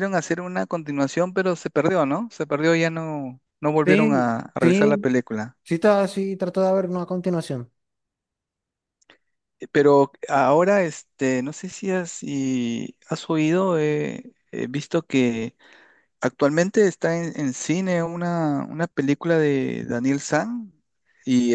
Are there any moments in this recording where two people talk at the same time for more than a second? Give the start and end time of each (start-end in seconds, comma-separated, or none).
3.9-5.2